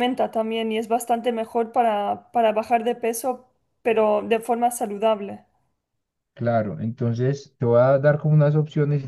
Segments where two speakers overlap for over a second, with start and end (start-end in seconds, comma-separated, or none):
none